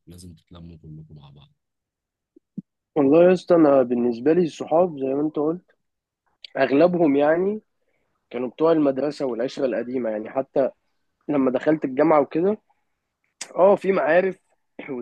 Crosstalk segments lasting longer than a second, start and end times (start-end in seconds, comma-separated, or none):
none